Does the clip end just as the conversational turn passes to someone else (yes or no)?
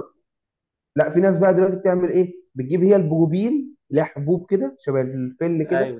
yes